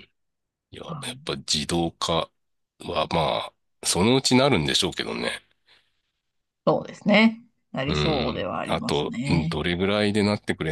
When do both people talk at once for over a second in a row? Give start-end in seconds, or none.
7.8-9.6